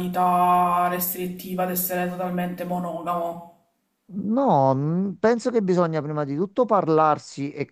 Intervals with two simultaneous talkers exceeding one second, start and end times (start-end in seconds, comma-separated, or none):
none